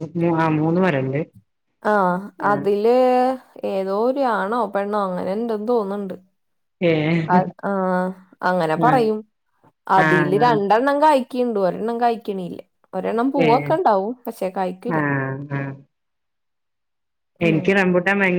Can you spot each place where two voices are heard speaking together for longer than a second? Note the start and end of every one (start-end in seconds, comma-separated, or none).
none